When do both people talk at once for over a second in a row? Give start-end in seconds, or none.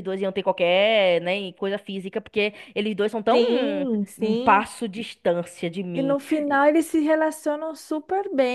3.3-4.6